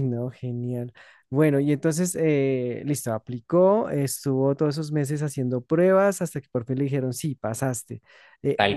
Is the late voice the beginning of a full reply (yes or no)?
no